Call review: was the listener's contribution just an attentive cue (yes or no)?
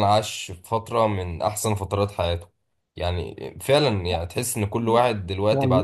yes